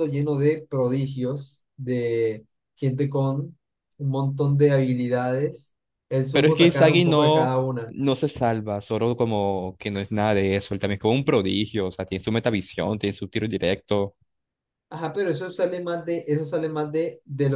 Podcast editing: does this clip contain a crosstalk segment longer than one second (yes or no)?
yes